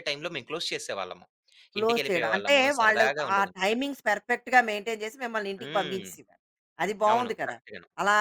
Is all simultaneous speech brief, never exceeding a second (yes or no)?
no